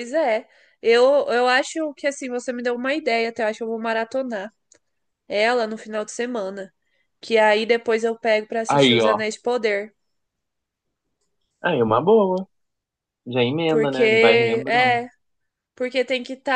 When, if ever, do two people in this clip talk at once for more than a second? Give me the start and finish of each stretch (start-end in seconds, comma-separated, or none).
13.7-15.0